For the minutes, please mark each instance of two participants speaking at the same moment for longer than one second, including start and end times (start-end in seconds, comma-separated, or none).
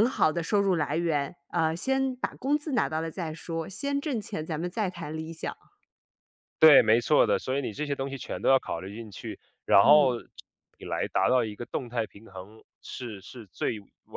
none